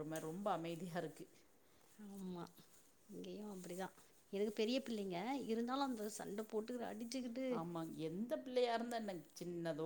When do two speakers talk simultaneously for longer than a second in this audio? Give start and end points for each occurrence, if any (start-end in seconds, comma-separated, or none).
none